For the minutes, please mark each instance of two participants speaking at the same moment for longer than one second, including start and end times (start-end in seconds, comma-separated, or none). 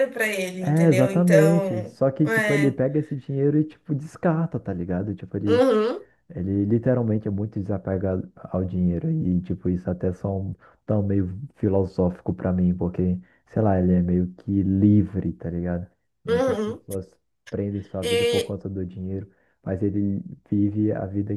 0.6-2.8